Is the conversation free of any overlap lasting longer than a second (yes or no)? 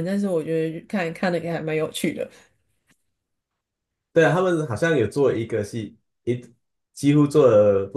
yes